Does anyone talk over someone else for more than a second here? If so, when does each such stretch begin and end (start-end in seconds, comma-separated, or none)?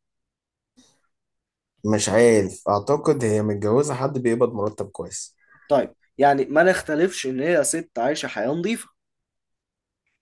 none